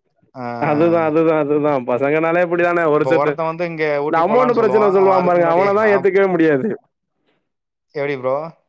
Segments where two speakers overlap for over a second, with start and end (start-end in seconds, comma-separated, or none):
4.1-6.1